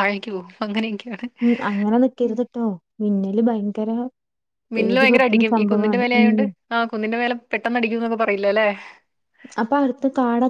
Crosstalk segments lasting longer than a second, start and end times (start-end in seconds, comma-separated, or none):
4.8-6.4